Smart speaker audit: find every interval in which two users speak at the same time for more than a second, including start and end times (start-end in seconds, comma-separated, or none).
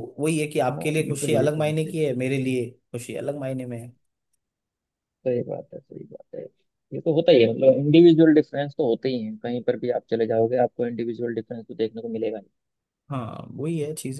0.7-2.1